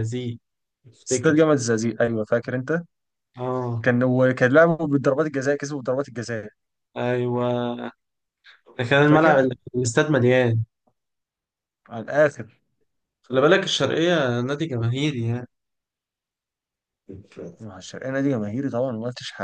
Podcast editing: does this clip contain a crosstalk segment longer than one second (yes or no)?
no